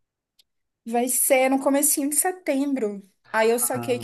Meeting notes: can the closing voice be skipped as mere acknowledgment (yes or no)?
yes